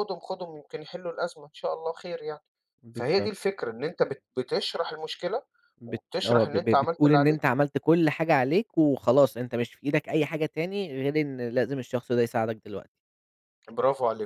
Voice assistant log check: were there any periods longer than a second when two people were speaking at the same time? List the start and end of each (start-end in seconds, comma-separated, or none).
5.9-7.4